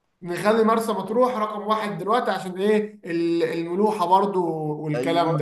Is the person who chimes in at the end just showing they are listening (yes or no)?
no